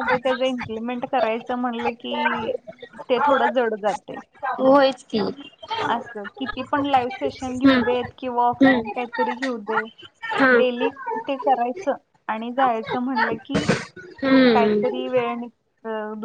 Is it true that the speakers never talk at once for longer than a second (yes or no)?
yes